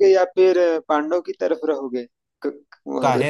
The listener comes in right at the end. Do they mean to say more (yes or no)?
yes